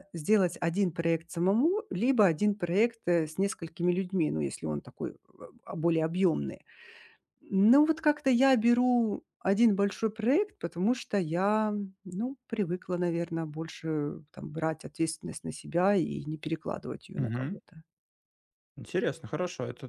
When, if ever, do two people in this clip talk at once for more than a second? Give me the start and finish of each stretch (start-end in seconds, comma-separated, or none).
none